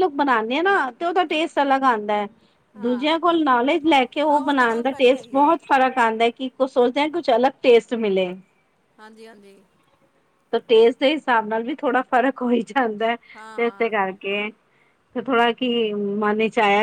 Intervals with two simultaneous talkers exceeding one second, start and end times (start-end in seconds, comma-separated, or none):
4.3-5.5